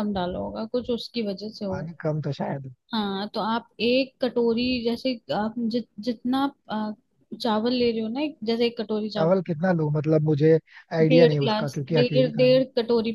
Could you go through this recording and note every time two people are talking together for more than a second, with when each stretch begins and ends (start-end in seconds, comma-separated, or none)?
11.1-12.6